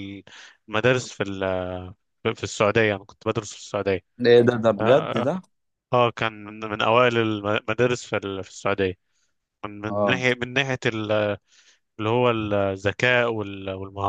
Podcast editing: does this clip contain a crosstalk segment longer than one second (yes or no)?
no